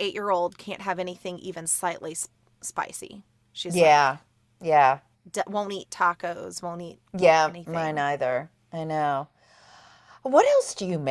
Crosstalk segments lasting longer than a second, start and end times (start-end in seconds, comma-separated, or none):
none